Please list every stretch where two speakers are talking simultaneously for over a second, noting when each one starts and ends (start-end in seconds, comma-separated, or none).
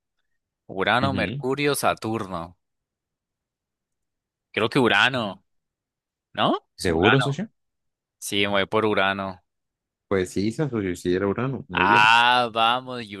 none